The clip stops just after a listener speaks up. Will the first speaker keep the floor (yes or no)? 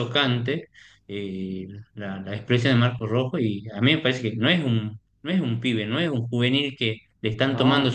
yes